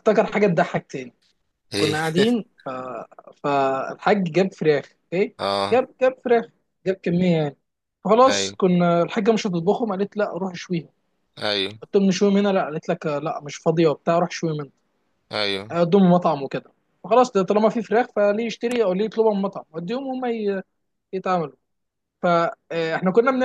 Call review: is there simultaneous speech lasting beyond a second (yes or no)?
no